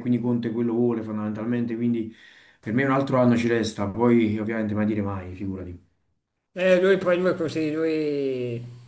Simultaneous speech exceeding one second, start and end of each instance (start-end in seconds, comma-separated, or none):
none